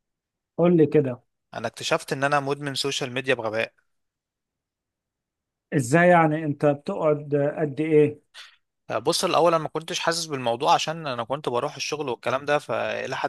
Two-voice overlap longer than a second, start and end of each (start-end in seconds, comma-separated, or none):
none